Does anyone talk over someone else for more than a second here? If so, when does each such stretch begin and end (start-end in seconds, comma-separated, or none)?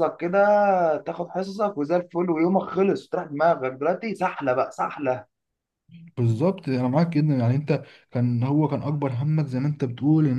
none